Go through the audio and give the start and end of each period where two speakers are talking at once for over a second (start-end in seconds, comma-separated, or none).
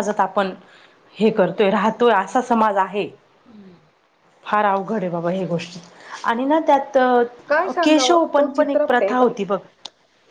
7.8-9.3